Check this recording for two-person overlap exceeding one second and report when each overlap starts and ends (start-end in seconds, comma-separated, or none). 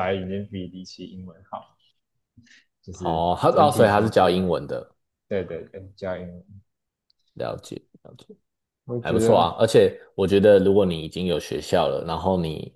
3.0-4.4